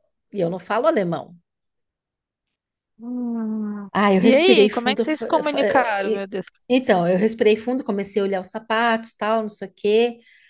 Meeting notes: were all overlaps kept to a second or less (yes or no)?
no